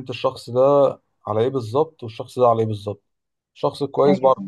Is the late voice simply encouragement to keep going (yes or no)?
yes